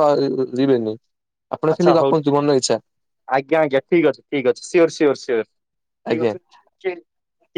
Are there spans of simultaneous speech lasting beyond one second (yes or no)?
no